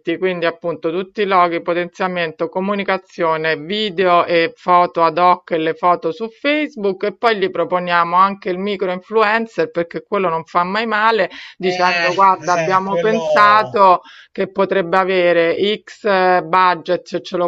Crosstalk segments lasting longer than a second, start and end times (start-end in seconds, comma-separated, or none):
11.6-13.8